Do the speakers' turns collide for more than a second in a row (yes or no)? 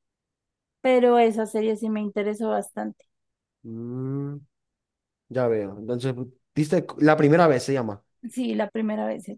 no